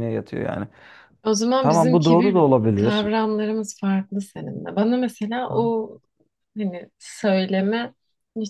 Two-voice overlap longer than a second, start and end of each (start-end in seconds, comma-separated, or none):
1.6-3.1